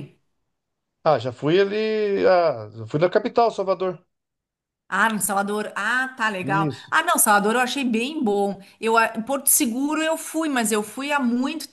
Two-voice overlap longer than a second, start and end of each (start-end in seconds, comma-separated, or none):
none